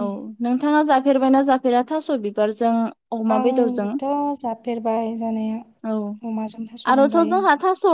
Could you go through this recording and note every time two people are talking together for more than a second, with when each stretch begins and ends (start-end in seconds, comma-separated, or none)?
none